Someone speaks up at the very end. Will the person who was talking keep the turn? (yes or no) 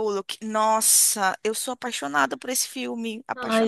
no